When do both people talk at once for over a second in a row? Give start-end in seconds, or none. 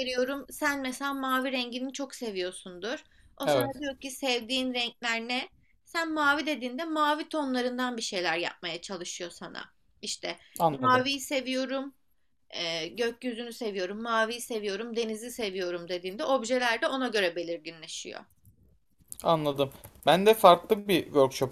none